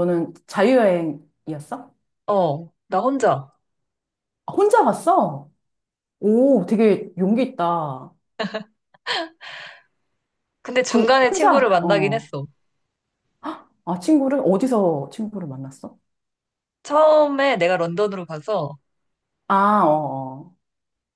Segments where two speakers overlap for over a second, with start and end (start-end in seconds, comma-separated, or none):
10.9-12.3